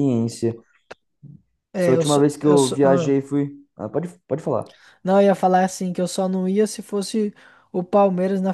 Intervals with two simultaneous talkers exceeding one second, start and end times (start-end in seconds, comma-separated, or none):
1.8-3.1